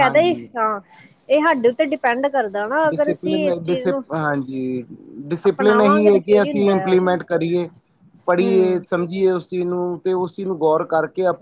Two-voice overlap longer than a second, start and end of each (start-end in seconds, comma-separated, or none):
5.5-6.9